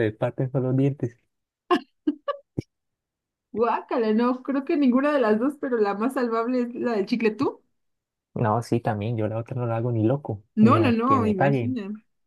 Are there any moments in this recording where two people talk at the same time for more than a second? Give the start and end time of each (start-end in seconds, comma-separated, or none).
10.6-11.8